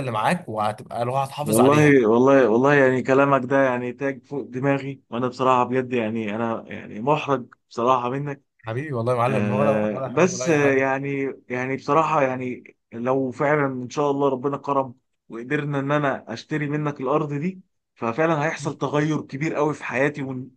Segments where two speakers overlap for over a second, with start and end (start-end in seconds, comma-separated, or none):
9.2-10.8